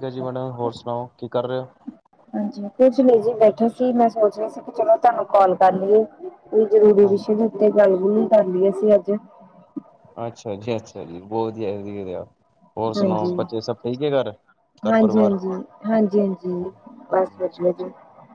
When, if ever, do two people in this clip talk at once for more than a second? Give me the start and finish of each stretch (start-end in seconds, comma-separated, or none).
none